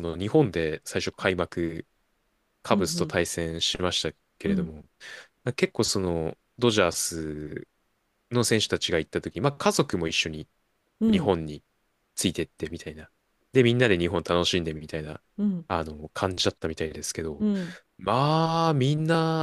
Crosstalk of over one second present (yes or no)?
no